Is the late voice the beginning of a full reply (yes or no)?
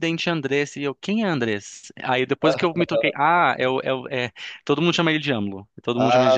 yes